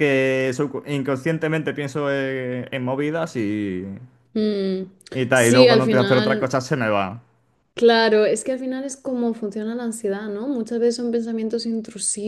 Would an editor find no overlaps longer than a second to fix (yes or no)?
no